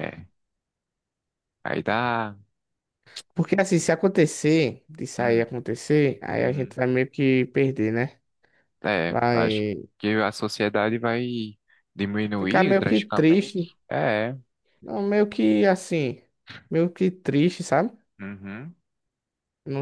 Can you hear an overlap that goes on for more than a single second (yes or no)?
yes